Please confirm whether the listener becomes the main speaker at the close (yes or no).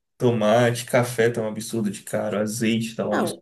yes